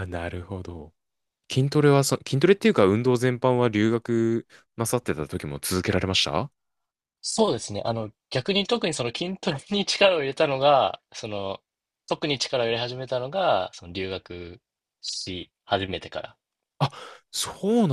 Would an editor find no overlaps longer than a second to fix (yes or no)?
yes